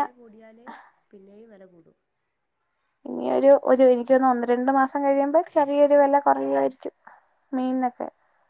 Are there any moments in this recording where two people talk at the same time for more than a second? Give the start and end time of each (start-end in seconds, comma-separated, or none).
none